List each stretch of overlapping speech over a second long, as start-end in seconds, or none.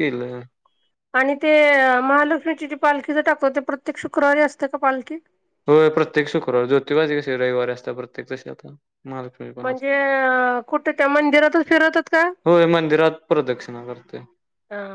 none